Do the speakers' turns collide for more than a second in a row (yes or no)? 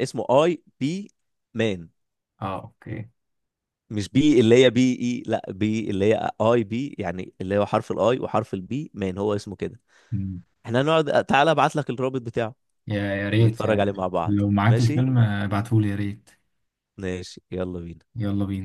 yes